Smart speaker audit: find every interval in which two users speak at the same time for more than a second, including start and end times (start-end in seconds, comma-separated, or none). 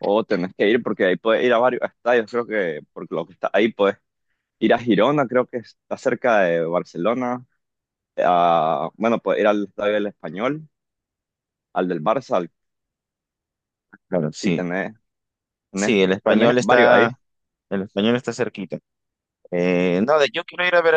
15.7-17.1